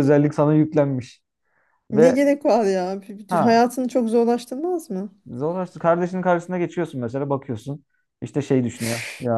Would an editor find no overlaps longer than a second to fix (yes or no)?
yes